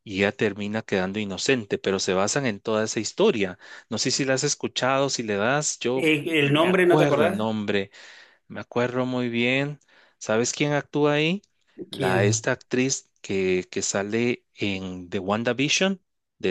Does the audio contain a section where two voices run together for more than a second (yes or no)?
yes